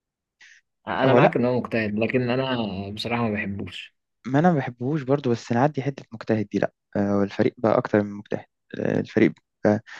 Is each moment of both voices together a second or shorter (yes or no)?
yes